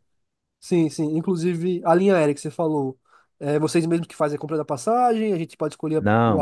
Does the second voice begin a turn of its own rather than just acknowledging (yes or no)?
yes